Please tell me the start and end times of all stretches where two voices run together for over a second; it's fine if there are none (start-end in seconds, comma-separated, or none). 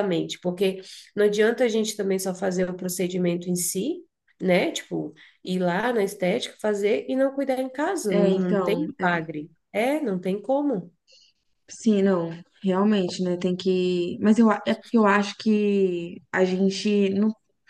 8.1-9.4